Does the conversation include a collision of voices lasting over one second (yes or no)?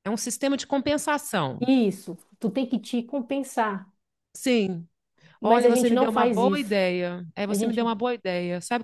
yes